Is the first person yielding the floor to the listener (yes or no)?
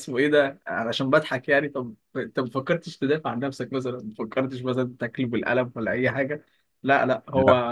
yes